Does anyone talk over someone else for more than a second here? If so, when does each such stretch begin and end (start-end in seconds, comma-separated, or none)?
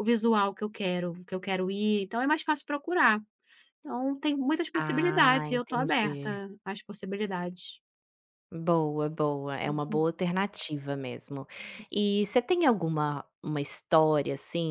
4.7-6.4